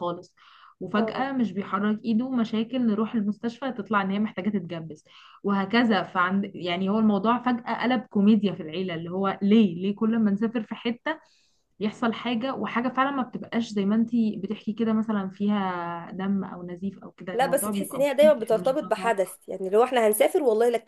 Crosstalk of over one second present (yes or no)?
yes